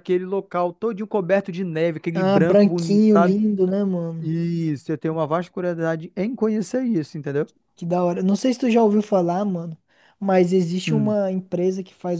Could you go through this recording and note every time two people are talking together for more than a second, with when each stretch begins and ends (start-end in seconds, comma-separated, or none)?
2.1-3.4